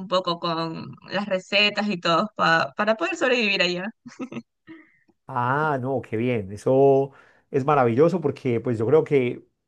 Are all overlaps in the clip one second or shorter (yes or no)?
yes